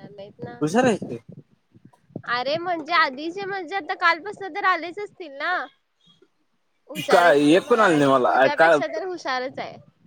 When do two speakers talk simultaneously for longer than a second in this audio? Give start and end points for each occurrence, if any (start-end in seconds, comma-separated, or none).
7.1-8.8